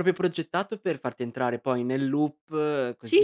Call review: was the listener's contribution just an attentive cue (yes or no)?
no